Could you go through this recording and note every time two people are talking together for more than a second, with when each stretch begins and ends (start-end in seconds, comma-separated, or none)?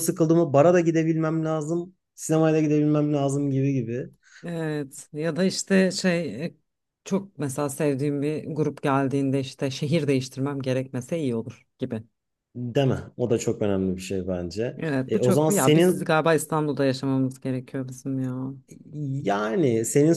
14.8-16.1